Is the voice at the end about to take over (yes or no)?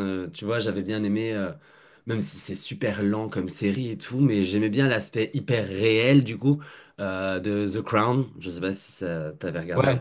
yes